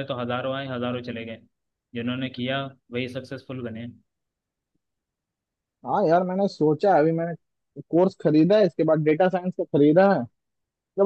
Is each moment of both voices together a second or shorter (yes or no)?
yes